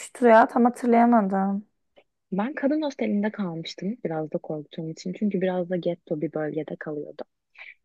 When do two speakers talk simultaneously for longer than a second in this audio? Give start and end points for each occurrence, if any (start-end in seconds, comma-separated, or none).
none